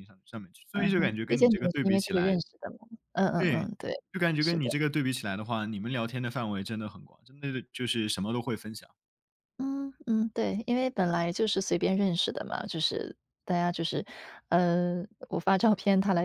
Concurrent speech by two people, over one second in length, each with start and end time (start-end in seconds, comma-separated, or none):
0.7-2.4